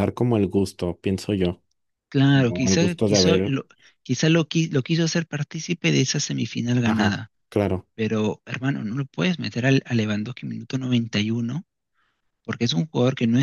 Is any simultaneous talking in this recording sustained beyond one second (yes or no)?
yes